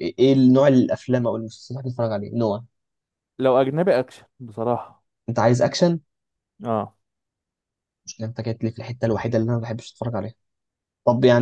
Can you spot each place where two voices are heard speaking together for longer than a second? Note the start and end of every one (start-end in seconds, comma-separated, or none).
none